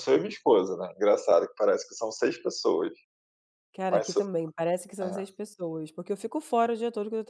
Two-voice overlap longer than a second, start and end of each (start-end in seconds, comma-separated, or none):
none